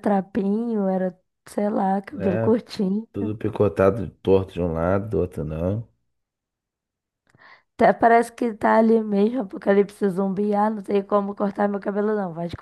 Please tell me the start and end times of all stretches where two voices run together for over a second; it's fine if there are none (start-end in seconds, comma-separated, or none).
none